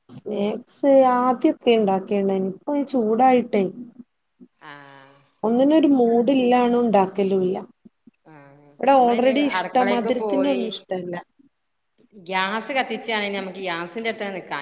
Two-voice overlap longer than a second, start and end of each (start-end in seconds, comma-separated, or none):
8.7-10.6